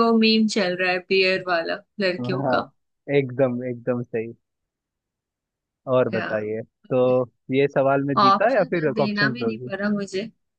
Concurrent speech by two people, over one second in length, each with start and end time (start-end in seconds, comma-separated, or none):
8.2-9.7